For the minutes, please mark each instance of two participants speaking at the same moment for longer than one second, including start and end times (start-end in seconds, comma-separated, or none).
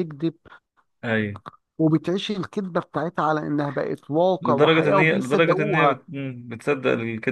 4.4-6.0